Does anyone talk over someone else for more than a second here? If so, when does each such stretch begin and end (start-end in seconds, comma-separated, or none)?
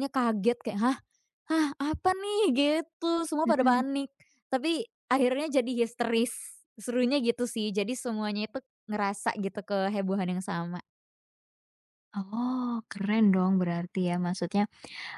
none